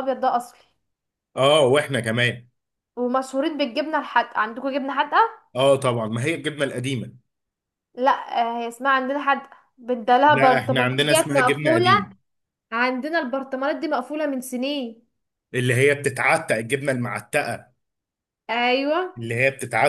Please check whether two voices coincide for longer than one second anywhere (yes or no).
yes